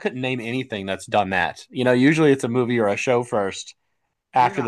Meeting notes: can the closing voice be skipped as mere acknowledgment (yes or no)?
no